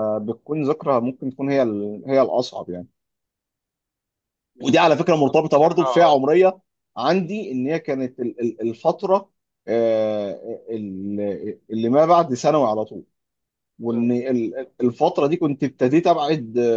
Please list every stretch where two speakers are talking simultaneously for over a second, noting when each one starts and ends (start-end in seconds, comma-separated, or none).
4.6-6.2